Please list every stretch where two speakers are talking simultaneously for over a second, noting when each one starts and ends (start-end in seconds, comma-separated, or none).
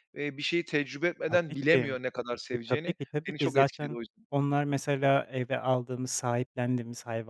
2.5-4.3